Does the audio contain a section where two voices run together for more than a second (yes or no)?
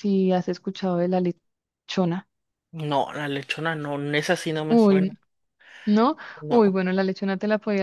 no